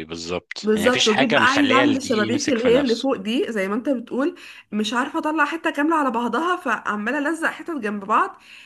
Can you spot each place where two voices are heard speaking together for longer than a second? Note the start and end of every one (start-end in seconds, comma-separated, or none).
0.6-3.1